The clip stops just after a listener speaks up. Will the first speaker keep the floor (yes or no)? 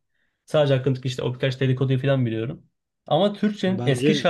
yes